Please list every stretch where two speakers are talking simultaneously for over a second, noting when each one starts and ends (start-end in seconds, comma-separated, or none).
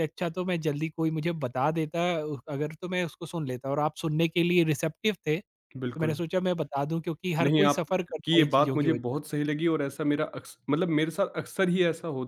7.4-9.2